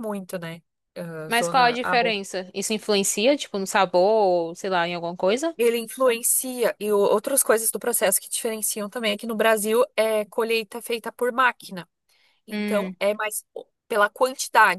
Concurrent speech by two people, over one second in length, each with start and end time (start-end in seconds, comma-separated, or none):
none